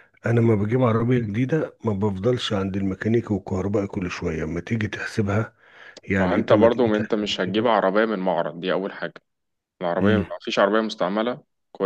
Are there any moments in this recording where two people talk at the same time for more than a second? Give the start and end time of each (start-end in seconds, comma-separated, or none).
6.2-7.9